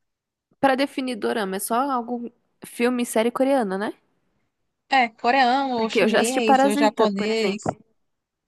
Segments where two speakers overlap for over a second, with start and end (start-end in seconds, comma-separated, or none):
5.8-7.7